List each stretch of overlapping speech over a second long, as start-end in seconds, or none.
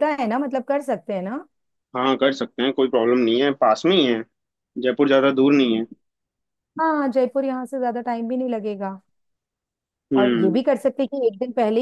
none